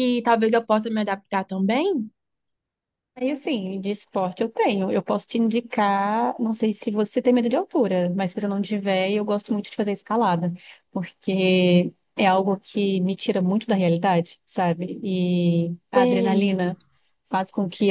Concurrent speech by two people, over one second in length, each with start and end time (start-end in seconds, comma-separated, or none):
none